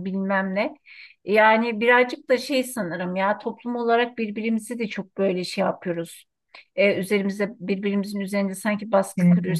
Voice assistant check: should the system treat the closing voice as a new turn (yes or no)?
no